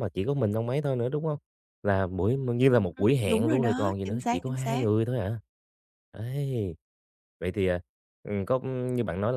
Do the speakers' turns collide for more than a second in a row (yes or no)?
yes